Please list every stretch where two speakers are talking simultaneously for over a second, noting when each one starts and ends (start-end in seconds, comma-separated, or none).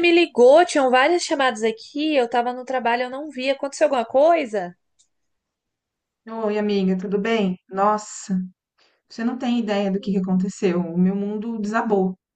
none